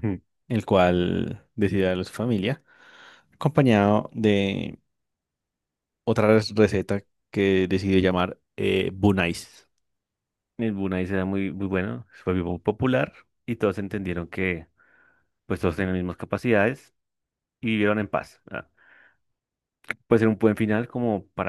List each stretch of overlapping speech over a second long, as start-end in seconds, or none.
none